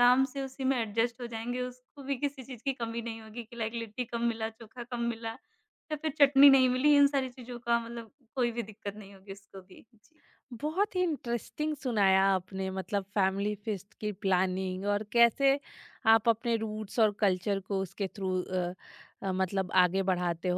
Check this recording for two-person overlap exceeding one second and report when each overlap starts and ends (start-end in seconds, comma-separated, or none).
none